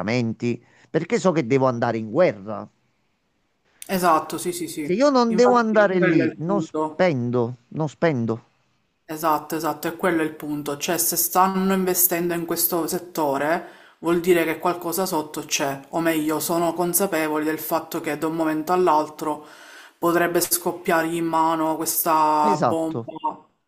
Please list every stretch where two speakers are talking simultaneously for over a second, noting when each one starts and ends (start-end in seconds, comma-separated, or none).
4.8-7.0